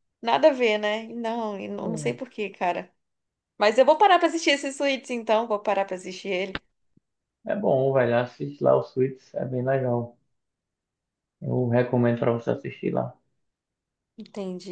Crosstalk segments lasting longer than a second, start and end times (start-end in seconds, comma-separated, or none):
none